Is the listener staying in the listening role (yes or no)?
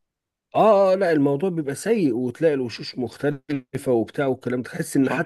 yes